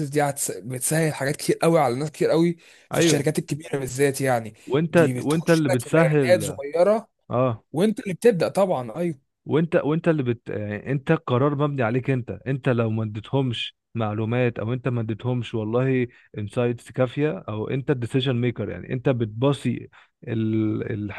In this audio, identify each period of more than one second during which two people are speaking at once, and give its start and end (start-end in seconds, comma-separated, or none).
4.9-6.6